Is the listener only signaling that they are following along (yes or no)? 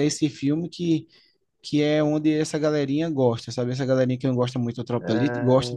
no